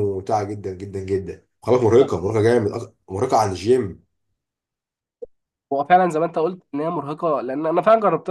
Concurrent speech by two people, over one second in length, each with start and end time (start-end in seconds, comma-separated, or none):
none